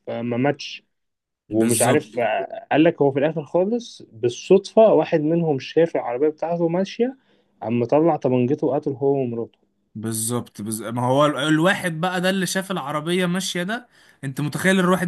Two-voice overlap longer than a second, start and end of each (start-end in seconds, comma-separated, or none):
none